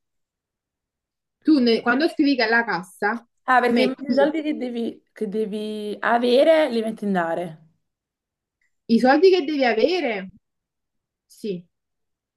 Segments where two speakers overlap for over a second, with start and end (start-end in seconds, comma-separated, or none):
none